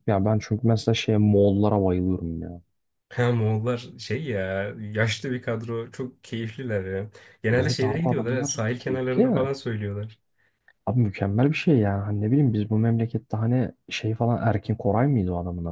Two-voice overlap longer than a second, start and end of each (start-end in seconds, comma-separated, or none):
7.5-9.5